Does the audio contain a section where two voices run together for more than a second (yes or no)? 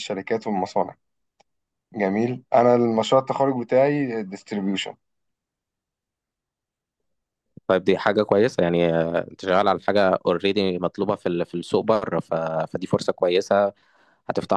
no